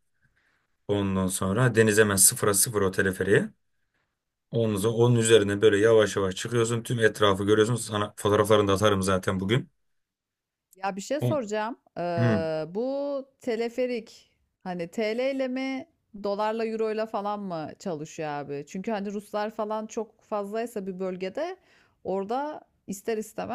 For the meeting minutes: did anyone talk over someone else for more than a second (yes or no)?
no